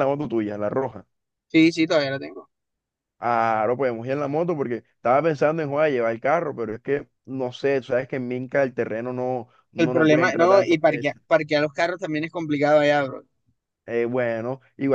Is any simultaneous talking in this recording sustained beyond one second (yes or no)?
yes